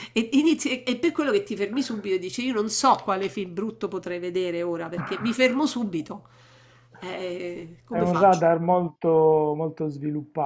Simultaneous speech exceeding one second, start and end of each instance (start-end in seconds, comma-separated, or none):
none